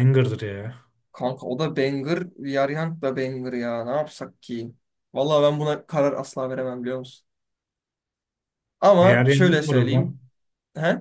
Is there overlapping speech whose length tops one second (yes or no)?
yes